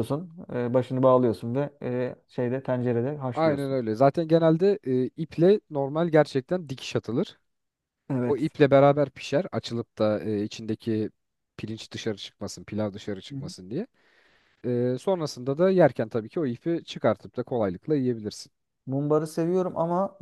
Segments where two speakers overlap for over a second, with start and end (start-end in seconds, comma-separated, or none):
none